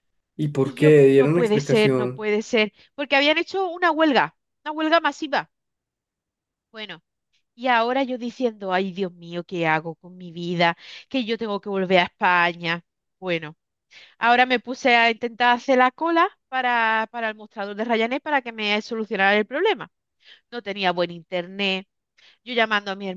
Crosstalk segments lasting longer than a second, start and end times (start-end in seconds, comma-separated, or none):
0.6-2.3